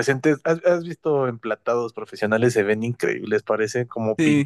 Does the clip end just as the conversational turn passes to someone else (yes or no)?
yes